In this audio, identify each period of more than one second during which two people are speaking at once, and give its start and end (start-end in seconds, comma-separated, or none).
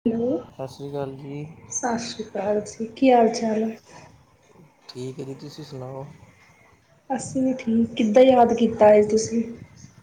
none